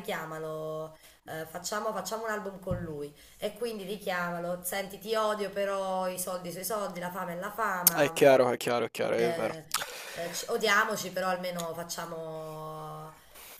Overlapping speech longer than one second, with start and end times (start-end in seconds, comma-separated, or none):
none